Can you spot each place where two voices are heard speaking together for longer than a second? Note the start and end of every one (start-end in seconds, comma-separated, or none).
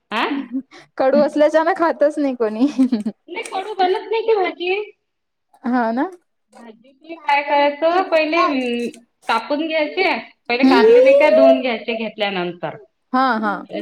none